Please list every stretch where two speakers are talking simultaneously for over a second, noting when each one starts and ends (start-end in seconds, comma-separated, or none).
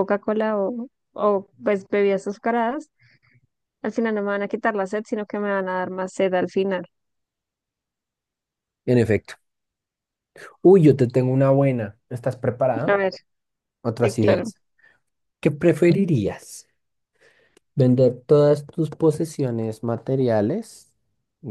none